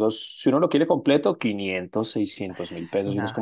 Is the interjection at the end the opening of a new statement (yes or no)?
no